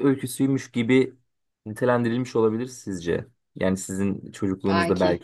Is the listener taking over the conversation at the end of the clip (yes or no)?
no